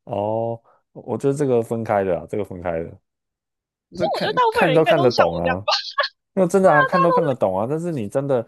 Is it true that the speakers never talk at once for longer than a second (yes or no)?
no